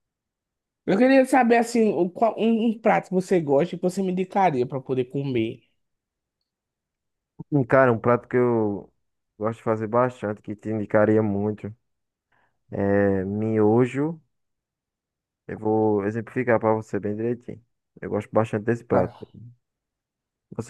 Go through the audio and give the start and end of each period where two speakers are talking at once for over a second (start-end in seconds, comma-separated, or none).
none